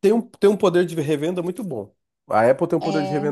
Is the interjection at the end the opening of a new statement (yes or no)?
no